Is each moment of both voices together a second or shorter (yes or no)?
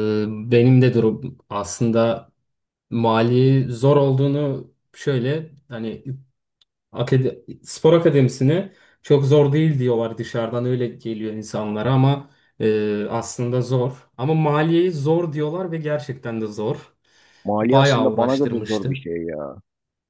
no